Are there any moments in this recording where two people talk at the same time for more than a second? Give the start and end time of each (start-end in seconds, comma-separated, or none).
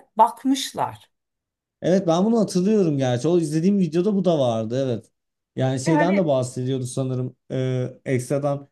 none